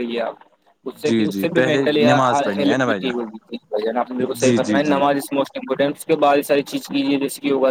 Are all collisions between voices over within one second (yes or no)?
no